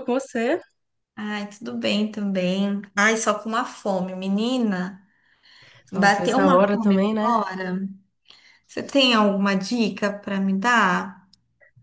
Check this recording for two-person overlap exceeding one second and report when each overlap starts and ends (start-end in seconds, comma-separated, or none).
5.9-7.3